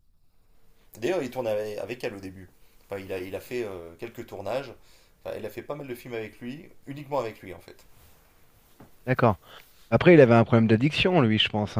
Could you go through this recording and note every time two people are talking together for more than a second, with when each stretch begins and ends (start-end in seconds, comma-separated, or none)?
none